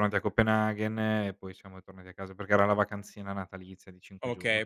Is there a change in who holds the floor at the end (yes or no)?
yes